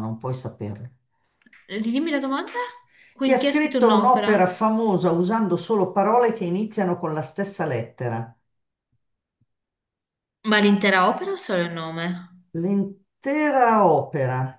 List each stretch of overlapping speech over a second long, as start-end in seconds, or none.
3.2-4.6